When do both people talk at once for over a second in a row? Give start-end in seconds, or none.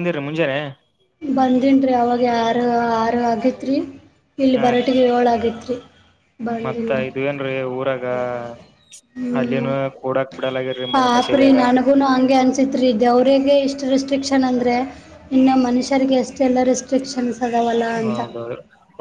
none